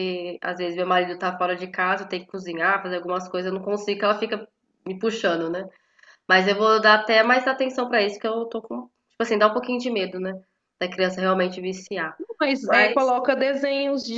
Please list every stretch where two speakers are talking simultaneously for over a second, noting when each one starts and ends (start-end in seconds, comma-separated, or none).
none